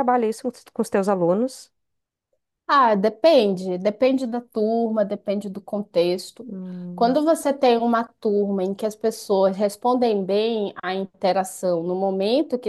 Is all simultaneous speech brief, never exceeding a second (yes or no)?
yes